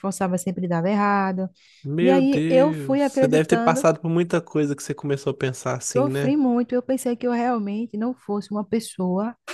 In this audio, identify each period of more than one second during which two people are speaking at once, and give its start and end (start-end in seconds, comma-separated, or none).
2.0-3.9